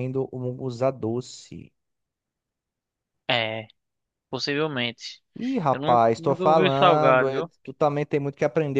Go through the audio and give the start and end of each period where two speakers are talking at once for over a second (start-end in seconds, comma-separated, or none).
5.7-7.5